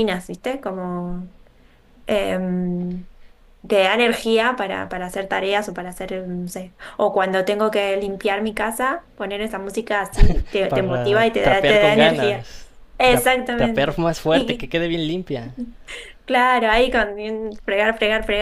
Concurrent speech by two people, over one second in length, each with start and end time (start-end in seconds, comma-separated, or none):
10.7-12.4, 13.1-14.7